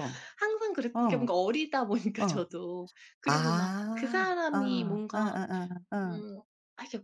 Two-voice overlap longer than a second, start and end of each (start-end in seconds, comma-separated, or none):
3.2-5.4